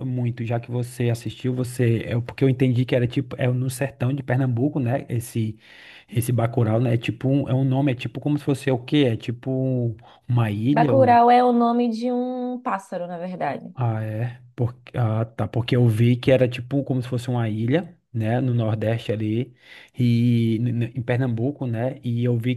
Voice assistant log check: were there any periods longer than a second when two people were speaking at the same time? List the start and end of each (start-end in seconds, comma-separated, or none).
none